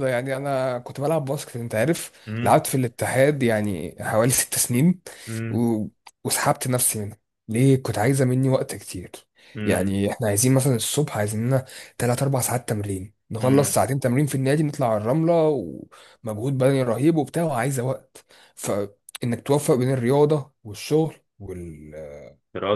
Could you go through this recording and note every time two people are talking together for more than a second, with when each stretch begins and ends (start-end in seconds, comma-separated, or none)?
none